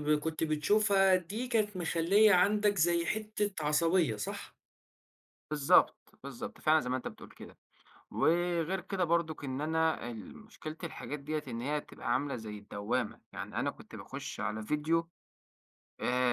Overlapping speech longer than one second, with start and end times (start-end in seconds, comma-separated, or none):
none